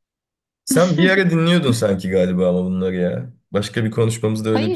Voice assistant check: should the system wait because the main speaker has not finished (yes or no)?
no